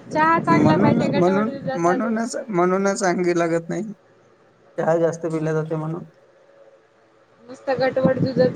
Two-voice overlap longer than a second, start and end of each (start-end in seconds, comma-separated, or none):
none